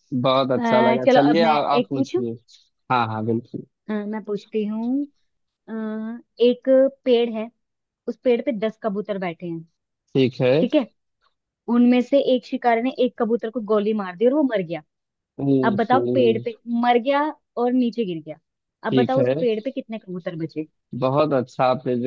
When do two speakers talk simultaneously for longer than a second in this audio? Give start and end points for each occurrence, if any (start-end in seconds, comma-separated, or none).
0.6-2.2